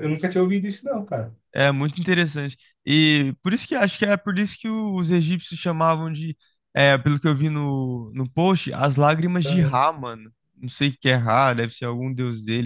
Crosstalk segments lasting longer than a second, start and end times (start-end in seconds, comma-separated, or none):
none